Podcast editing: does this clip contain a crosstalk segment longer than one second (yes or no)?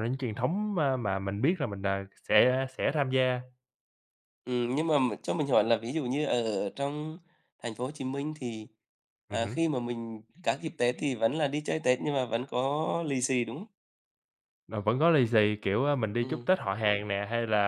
no